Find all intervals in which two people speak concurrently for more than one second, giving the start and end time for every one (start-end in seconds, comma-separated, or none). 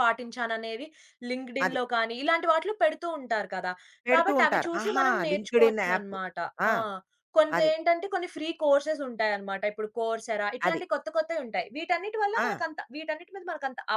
4.2-6.1